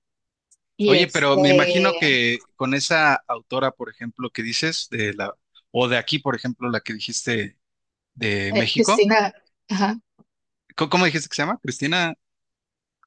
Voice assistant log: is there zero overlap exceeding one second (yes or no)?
no